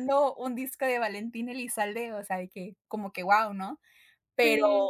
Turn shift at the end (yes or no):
no